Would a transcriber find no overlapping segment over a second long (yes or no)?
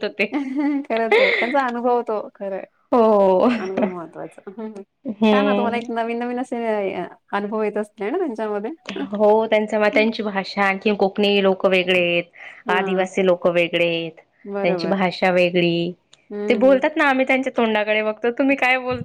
yes